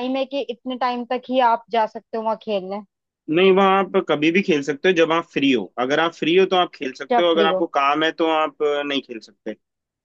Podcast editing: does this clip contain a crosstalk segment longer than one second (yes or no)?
no